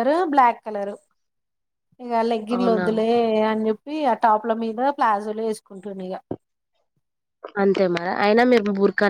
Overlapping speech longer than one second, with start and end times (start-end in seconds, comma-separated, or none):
none